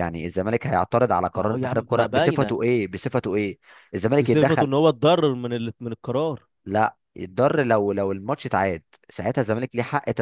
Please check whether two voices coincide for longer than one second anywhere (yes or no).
yes